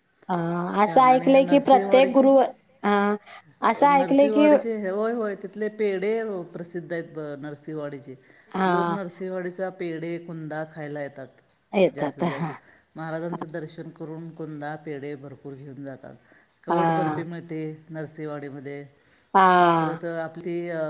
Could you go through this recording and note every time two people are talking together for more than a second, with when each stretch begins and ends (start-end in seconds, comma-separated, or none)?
0.8-2.3